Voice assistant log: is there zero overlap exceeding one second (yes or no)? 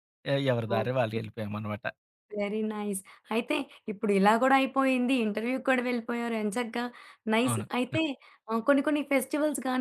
yes